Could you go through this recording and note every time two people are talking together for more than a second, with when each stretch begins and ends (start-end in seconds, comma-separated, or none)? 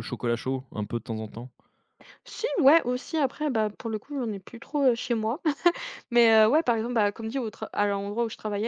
none